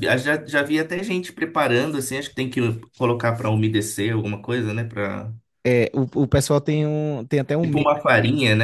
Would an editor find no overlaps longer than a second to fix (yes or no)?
yes